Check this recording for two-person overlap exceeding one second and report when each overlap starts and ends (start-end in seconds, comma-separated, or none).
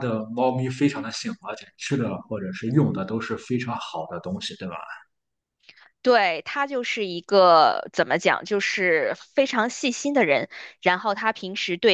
none